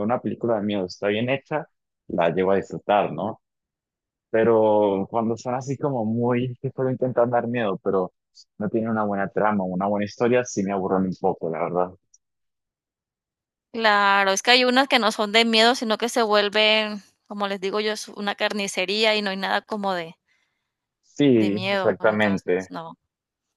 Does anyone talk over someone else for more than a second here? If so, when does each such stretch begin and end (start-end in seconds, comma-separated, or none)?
21.4-22.7